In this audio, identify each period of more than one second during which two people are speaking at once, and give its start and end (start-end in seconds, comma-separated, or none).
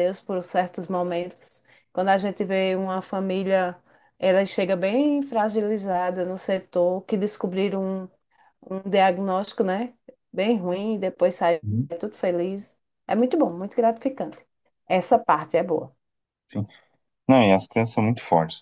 none